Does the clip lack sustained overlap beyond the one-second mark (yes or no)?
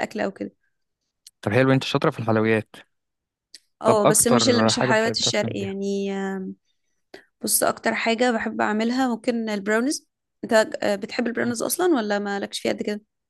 no